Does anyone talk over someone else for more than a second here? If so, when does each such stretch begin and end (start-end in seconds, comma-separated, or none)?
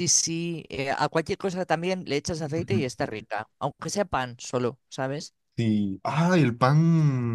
none